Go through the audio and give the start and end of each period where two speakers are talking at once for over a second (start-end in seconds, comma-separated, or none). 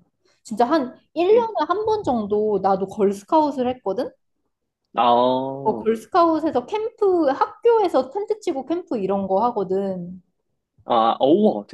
none